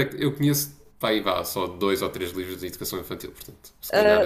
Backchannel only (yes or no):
no